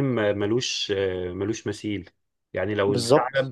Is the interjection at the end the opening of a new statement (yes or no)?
no